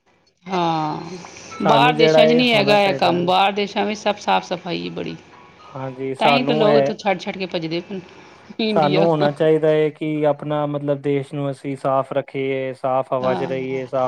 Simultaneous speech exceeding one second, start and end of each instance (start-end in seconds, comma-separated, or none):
1.7-3.3